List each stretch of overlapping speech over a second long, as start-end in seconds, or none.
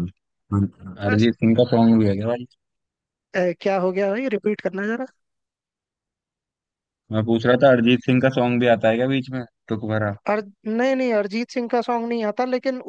none